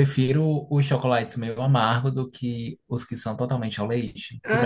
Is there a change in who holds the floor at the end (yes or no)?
yes